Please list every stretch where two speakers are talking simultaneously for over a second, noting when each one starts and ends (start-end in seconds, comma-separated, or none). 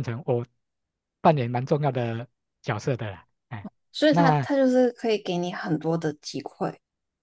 none